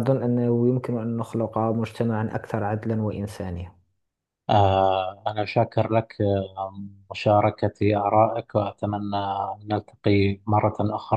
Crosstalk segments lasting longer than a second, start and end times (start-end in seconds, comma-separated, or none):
none